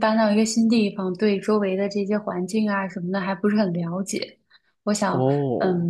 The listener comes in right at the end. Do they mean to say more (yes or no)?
no